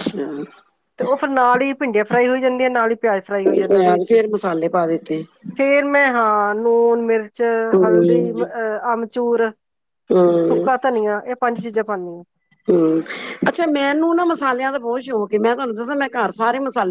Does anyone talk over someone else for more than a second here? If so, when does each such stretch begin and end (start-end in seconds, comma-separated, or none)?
none